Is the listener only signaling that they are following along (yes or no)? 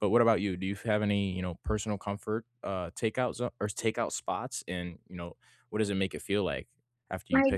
no